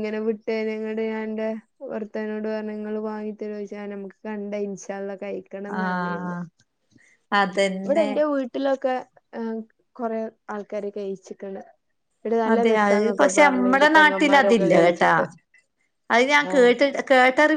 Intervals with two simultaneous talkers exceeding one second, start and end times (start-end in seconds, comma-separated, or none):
12.5-15.1